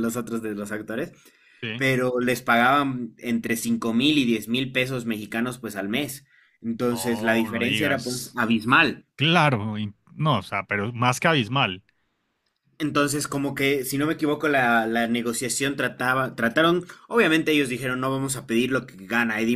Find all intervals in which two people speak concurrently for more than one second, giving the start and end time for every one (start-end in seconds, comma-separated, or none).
6.9-8.4